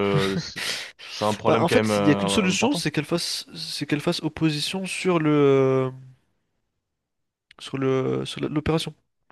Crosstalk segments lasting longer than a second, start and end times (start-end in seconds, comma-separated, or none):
1.5-2.8